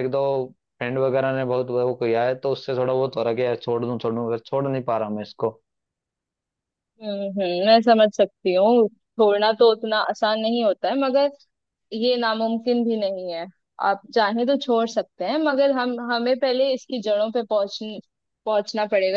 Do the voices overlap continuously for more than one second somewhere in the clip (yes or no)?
no